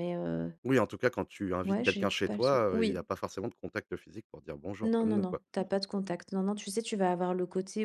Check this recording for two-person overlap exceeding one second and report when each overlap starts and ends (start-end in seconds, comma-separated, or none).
1.6-3.0